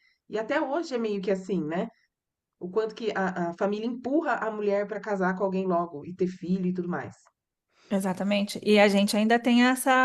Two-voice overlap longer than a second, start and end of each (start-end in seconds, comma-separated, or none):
none